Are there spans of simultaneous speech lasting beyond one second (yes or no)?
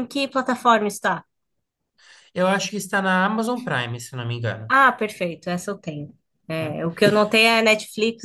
no